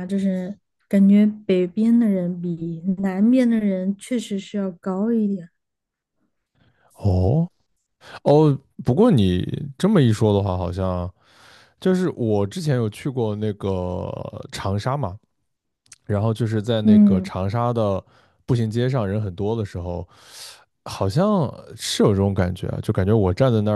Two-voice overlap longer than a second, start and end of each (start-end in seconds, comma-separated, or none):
none